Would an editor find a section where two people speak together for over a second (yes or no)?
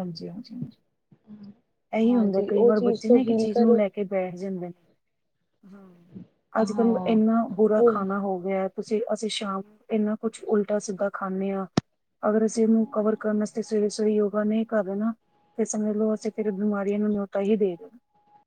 yes